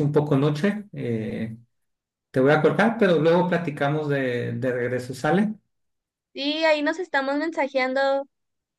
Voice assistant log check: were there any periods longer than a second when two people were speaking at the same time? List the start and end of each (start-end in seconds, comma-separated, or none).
none